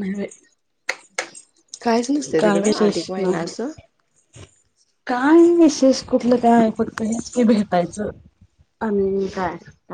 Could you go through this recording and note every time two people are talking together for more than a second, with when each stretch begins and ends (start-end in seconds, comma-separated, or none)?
2.4-3.7